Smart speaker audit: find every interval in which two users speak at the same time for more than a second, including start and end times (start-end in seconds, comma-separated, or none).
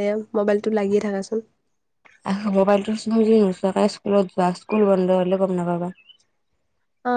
none